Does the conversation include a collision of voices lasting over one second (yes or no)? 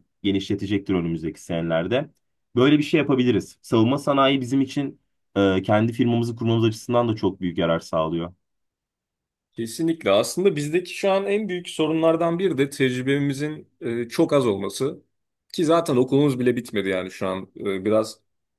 no